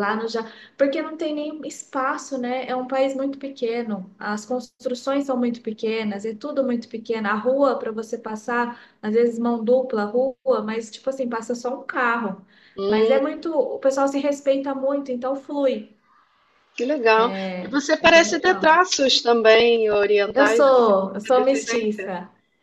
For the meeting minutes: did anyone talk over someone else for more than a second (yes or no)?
yes